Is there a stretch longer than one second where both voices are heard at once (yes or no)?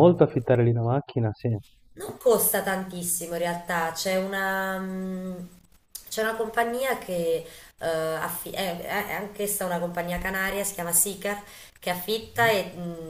no